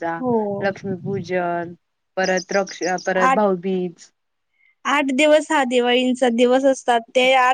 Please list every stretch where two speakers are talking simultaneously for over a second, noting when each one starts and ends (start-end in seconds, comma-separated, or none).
none